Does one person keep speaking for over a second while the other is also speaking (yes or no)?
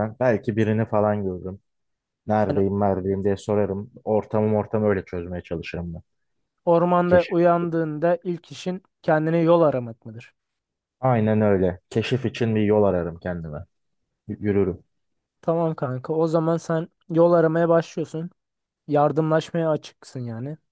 no